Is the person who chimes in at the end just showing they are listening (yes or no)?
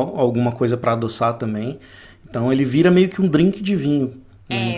no